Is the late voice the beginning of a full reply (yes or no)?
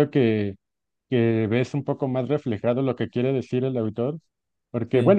no